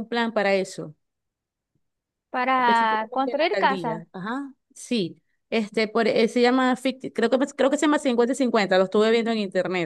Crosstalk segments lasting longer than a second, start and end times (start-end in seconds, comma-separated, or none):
2.5-4.0